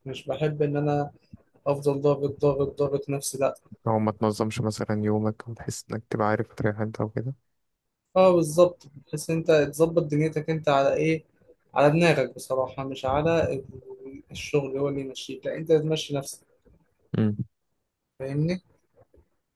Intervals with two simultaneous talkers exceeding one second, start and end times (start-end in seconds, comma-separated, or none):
none